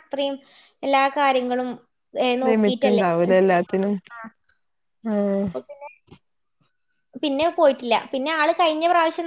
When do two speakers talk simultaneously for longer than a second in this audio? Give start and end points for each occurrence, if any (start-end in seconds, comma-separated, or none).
2.5-4.0